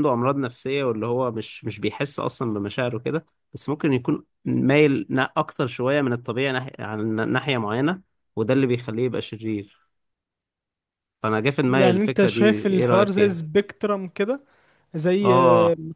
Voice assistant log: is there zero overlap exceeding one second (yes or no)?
no